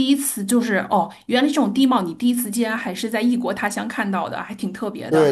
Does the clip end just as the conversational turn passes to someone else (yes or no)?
yes